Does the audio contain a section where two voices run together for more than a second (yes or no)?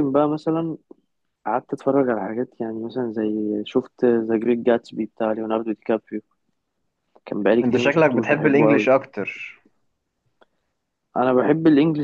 yes